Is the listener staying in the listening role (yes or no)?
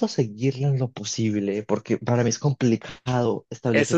no